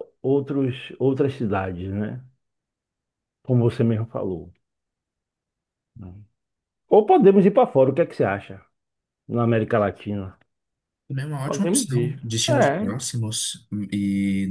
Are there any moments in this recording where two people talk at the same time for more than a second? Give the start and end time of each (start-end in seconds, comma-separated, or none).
11.4-12.9